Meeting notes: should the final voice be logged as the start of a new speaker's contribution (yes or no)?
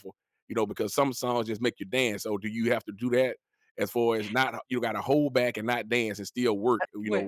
no